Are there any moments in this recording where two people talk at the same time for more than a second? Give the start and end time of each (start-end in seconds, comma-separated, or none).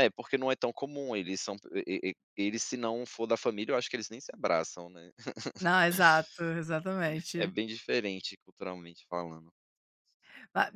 none